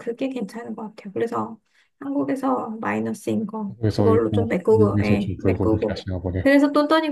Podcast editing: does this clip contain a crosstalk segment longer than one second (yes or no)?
yes